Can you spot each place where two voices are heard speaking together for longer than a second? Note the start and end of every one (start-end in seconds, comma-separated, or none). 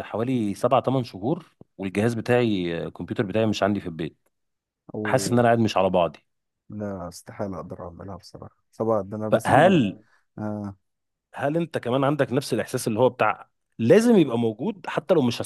none